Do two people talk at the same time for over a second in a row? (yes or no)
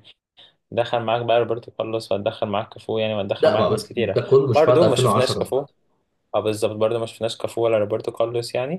yes